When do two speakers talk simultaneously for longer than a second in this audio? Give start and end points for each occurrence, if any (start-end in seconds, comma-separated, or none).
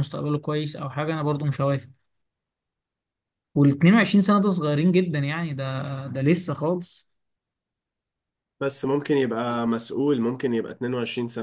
none